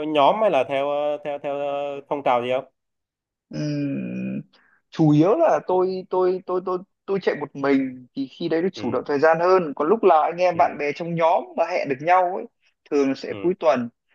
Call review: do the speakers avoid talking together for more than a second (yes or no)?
yes